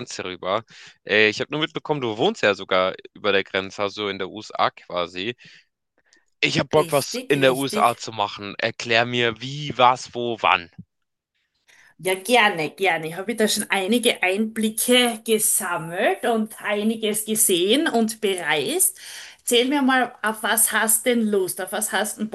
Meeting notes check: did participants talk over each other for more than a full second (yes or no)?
yes